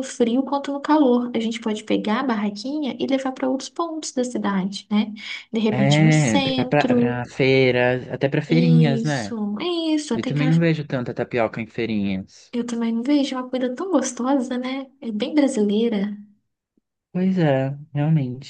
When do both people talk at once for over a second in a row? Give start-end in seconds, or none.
5.7-7.2